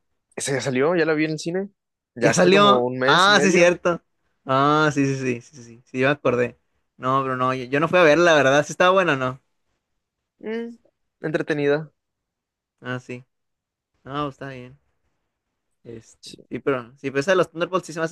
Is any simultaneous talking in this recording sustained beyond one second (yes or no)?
yes